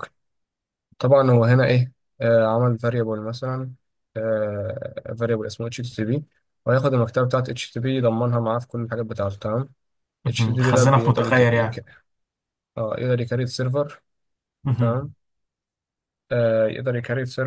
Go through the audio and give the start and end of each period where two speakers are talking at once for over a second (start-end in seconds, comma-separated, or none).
10.3-11.8